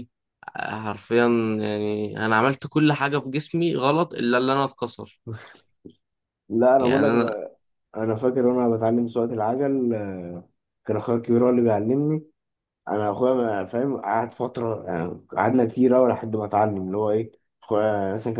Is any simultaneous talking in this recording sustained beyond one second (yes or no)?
no